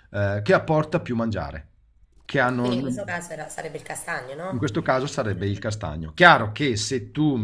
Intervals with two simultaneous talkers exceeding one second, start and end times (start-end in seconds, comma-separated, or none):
none